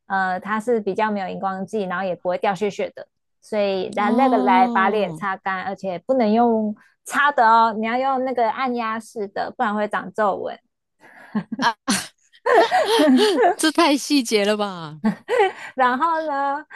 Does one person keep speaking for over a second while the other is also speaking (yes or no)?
yes